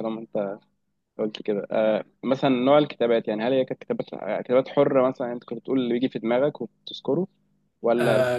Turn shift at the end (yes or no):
yes